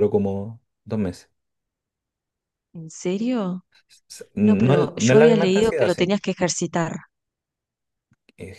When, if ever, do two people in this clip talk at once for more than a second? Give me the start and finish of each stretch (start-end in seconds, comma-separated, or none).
4.4-6.1